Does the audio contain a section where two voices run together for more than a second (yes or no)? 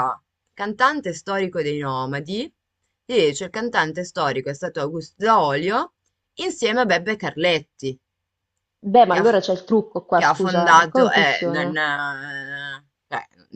yes